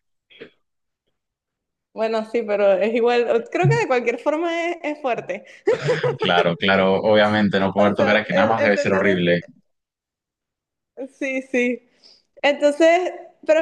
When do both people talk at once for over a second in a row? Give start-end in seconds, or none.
7.8-9.2